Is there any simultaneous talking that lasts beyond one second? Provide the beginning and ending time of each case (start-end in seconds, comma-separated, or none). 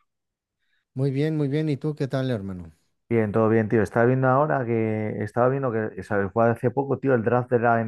none